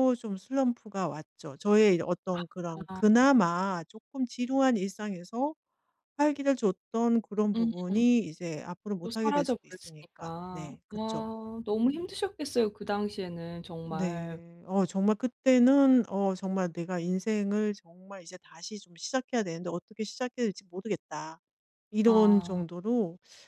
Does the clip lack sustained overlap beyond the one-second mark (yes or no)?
no